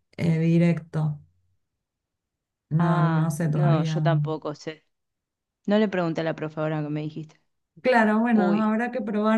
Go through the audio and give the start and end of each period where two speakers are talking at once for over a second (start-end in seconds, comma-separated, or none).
2.8-4.0